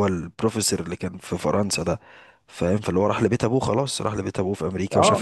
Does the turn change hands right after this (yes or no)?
no